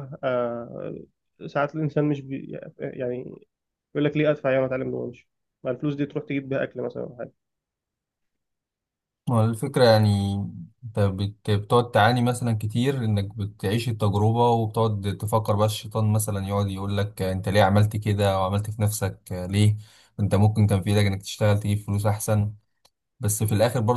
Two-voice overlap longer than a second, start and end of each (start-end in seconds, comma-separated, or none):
none